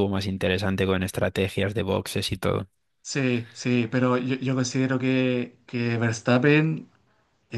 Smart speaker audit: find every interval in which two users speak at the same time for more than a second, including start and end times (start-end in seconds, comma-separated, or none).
none